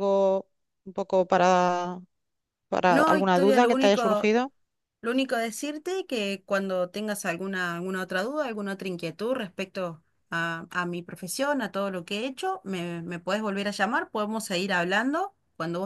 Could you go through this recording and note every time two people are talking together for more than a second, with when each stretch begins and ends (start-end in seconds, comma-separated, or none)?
2.9-4.3